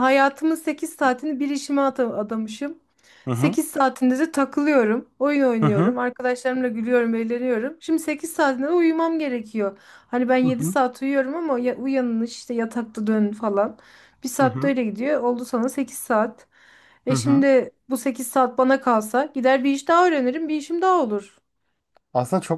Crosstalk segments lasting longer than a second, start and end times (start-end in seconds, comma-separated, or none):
none